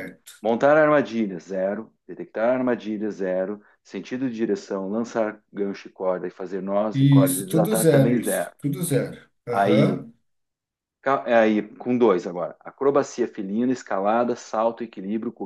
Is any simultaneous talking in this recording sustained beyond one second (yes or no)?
yes